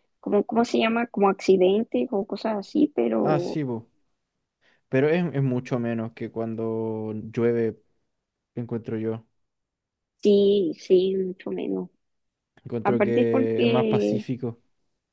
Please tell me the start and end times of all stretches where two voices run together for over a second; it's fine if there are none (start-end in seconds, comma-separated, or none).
12.8-14.2